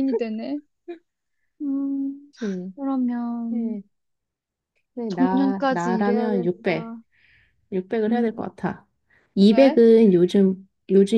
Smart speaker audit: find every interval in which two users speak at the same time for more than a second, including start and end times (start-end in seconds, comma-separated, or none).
5.1-6.9